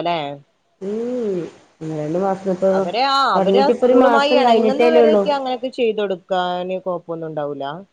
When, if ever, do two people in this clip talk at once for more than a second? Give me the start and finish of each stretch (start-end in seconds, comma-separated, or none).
3.4-5.2